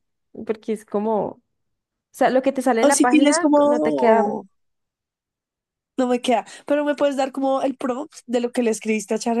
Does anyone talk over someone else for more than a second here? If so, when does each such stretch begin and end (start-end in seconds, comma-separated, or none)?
2.8-4.3